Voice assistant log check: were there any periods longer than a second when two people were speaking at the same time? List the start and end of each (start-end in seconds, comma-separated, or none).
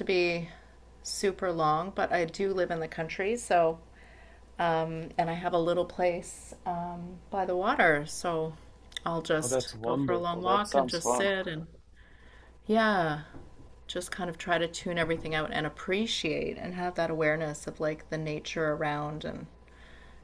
9.4-11.3